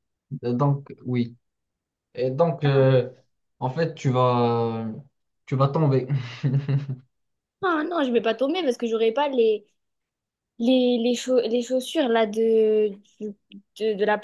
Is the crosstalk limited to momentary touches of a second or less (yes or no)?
yes